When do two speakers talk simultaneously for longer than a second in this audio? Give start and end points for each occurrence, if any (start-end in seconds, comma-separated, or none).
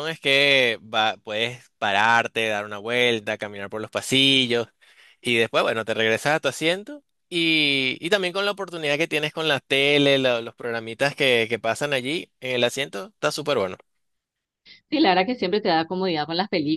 none